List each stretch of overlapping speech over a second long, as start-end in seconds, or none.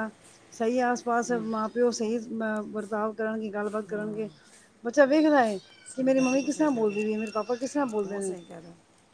6.0-7.3